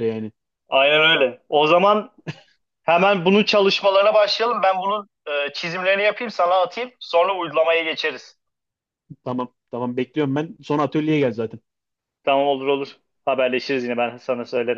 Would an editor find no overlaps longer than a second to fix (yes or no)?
yes